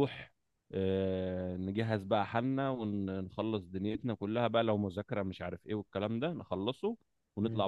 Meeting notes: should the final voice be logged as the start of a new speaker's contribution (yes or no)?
no